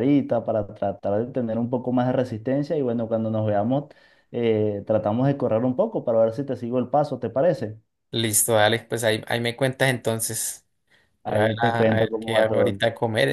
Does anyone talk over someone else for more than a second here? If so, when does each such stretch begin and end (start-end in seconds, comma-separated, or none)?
11.3-12.8